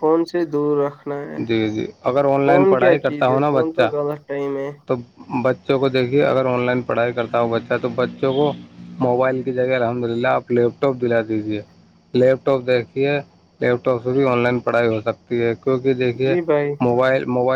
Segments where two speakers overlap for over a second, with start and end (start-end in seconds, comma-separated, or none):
2.4-3.9